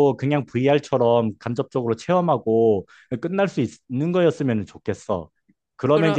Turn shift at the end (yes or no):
no